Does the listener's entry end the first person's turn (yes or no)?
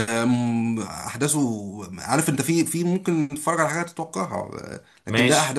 no